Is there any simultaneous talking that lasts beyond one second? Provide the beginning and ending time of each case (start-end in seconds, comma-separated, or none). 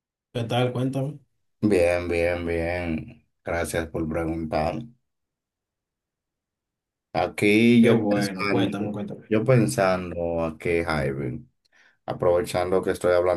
7.8-9.3